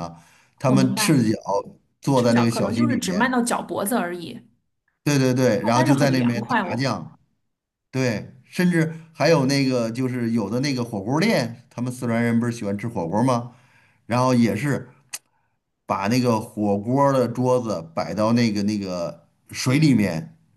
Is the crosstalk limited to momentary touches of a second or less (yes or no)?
no